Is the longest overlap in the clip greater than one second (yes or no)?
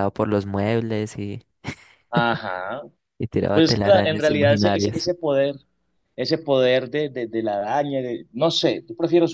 yes